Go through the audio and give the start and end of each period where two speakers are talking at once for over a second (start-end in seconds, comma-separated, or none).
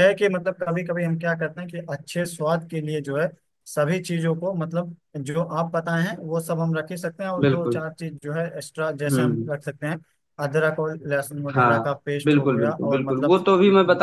11.5-13.3